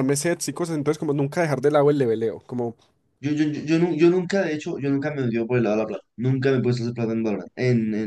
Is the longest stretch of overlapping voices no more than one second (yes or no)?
yes